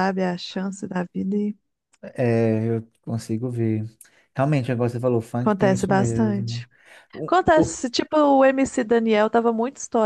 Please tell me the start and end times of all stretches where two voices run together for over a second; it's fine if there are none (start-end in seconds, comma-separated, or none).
5.4-6.7